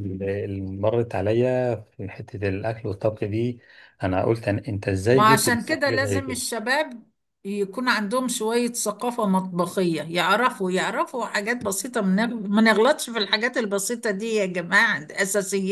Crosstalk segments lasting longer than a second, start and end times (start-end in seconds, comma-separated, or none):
5.1-6.4